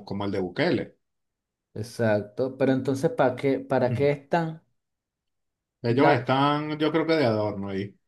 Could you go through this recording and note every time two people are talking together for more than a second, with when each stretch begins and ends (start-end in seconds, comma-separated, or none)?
none